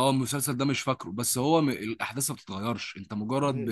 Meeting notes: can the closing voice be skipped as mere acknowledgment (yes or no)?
yes